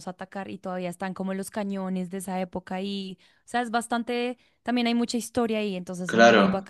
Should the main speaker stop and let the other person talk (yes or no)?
yes